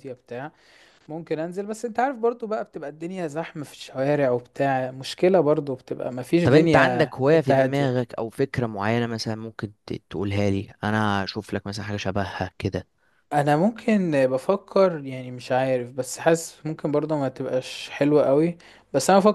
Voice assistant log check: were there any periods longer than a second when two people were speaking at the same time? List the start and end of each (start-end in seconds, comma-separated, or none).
6.4-8.1